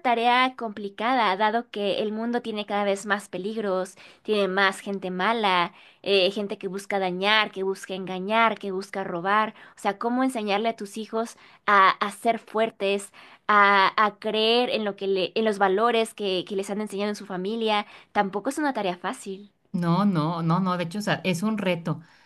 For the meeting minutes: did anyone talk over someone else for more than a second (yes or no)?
no